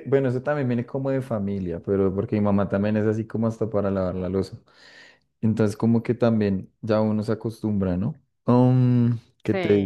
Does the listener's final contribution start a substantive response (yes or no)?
no